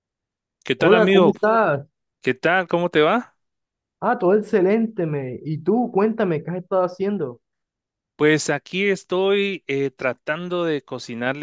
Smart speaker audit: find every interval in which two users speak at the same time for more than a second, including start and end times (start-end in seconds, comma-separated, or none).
none